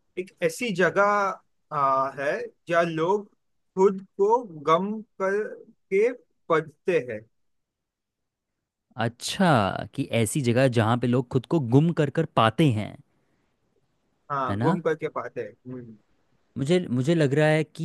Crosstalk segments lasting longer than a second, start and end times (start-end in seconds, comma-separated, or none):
none